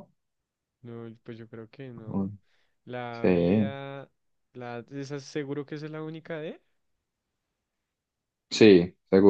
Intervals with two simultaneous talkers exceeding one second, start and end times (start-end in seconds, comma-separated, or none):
none